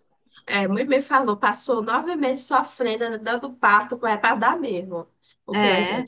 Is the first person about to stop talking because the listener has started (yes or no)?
no